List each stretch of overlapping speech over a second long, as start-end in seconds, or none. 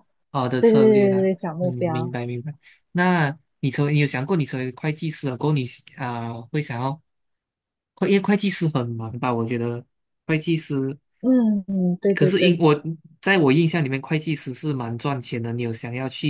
0.6-2.1